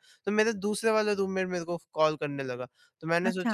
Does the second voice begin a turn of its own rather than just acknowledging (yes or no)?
no